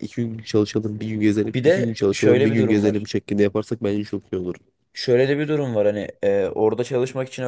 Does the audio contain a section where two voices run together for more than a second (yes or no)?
yes